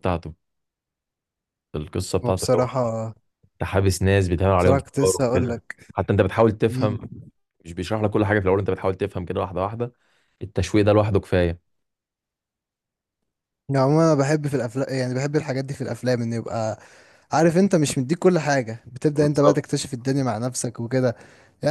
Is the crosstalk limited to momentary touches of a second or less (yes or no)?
no